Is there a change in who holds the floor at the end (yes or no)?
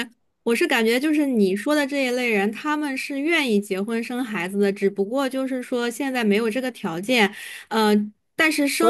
yes